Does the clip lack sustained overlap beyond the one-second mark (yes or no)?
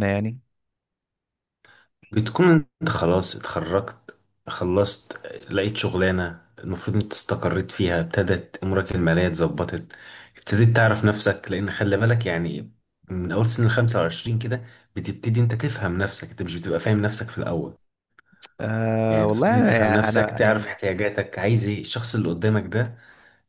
no